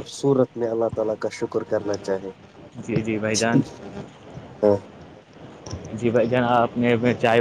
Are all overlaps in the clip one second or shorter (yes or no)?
yes